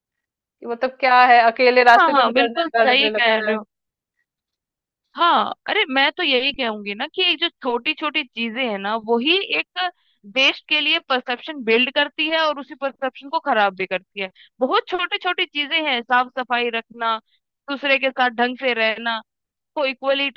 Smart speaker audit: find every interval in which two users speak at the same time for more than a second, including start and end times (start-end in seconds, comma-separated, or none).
2.0-3.5